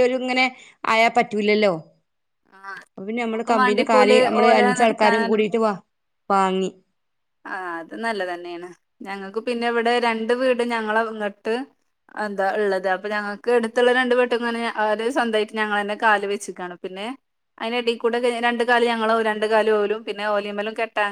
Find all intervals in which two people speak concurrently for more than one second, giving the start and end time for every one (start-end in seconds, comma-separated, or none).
3.2-5.3